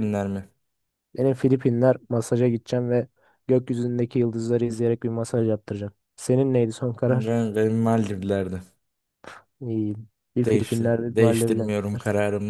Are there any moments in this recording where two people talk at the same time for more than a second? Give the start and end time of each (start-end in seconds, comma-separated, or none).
10.4-11.7